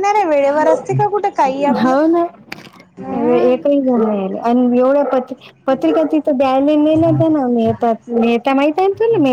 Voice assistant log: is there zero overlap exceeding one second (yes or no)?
yes